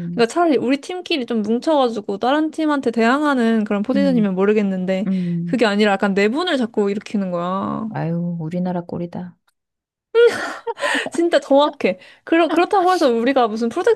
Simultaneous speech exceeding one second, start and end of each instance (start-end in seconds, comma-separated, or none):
none